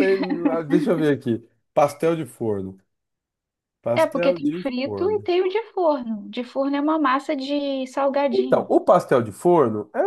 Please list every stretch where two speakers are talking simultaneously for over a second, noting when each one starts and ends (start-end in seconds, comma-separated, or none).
4.0-5.3